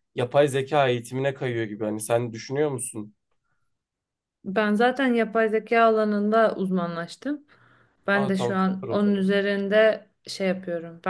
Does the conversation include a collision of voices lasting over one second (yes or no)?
yes